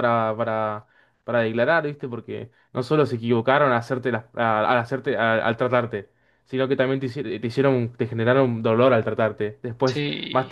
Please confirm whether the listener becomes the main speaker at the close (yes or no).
no